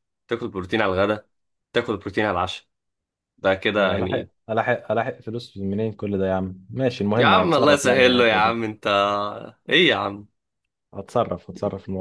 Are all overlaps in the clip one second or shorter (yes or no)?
no